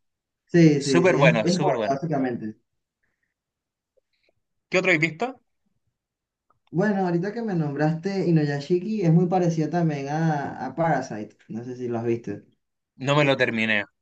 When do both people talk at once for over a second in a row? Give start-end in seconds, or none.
0.8-2.0